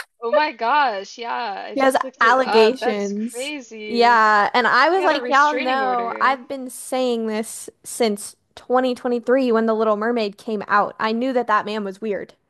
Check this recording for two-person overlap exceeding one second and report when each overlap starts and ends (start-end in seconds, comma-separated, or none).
1.7-4.2, 4.9-6.4